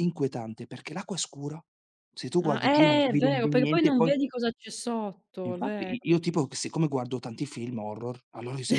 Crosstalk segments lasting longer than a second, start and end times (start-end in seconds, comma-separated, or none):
2.4-4.1